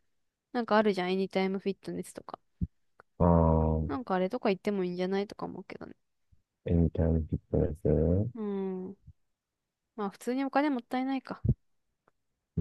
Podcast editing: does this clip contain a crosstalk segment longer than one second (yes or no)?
no